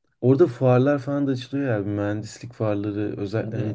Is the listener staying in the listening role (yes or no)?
yes